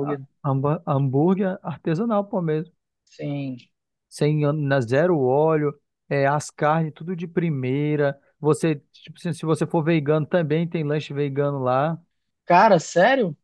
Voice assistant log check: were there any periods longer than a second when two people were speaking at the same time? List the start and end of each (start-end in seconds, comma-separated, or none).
none